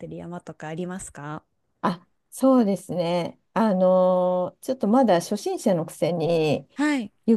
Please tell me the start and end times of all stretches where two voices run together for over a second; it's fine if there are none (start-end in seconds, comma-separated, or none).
none